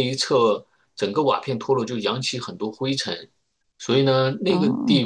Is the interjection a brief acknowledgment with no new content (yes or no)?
yes